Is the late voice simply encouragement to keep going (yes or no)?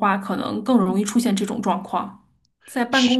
yes